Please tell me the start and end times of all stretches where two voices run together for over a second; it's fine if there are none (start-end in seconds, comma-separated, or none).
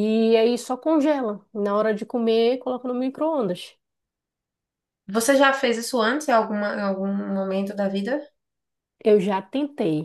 none